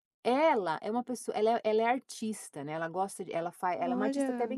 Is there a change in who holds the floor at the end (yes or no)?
no